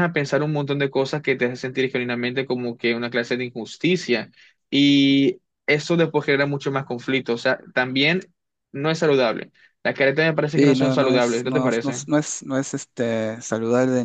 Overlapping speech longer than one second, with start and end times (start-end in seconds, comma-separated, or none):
10.6-12.0